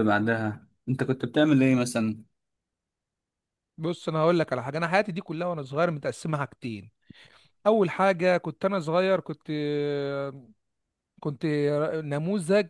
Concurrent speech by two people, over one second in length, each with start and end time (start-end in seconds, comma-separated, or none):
none